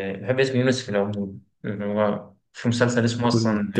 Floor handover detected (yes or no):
yes